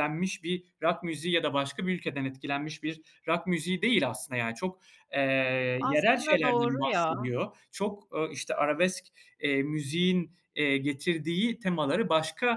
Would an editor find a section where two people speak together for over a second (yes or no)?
yes